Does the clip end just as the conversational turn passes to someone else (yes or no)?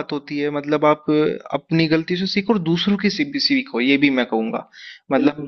yes